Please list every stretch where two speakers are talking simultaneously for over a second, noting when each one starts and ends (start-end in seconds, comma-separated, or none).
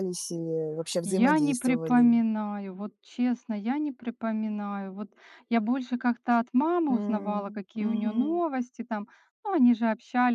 1.0-2.2, 6.9-8.4